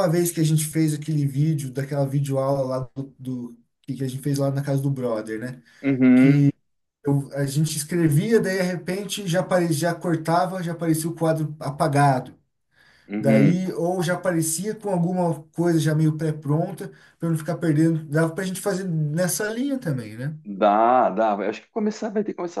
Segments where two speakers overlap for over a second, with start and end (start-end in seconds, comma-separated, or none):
none